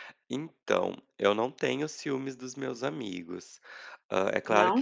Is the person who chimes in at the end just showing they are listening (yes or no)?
yes